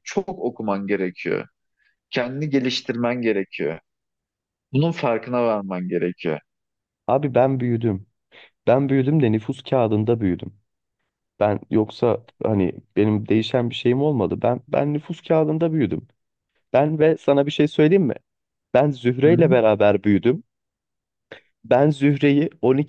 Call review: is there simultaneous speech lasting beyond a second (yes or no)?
no